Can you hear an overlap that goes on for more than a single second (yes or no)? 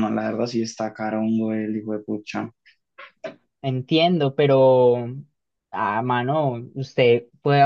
no